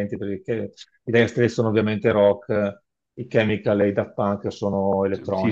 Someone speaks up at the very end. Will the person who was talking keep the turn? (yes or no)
no